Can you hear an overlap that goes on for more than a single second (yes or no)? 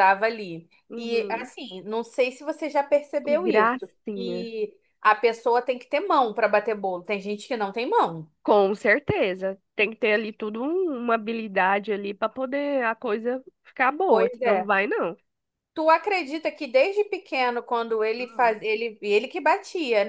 yes